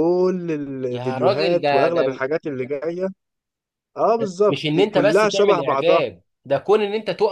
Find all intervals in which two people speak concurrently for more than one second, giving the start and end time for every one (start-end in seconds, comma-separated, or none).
0.9-2.2, 4.2-6.0